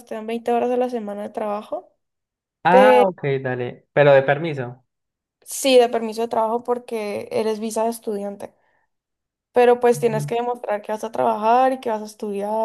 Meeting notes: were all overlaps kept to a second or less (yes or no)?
yes